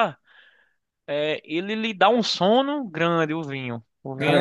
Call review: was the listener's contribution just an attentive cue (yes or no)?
no